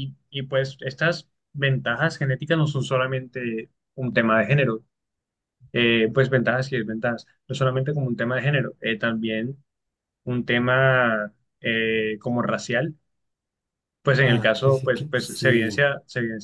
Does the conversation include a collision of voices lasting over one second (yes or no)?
yes